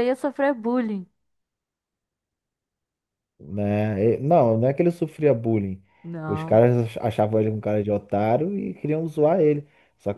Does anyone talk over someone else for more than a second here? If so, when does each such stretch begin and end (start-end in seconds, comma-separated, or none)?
none